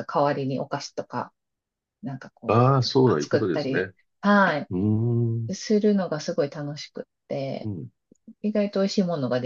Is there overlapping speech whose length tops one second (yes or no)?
yes